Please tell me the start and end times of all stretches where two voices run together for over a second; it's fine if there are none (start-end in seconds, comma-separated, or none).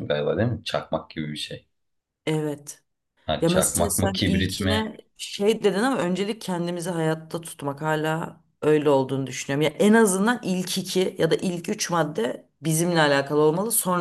3.4-4.8